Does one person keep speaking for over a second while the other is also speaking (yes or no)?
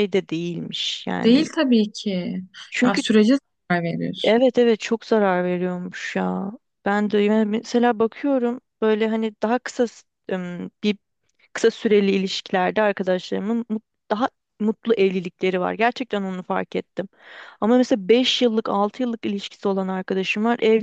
no